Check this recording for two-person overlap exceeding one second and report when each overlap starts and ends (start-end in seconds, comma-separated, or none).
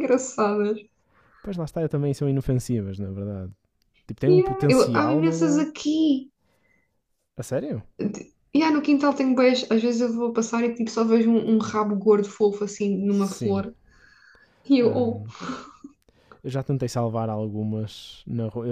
4.3-5.6